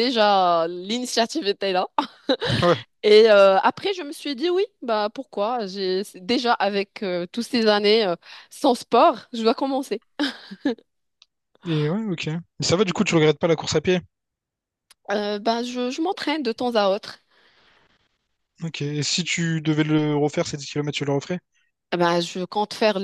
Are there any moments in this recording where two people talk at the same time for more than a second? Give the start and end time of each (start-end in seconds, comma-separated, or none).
none